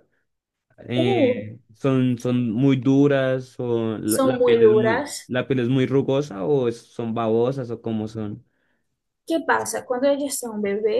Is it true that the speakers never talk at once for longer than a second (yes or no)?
no